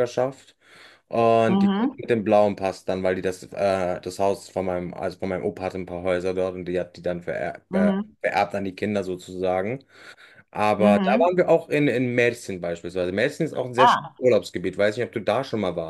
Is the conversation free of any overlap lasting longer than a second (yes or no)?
yes